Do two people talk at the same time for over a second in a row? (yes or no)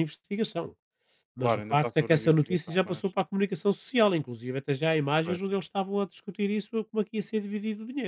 yes